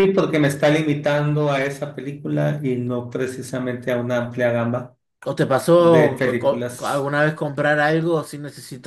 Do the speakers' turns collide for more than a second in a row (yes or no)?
yes